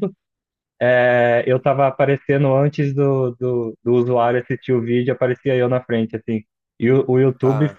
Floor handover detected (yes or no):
no